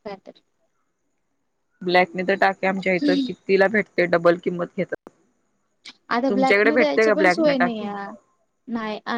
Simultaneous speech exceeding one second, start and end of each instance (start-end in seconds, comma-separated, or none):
6.3-7.9